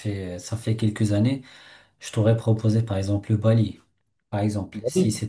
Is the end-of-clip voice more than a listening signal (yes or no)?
no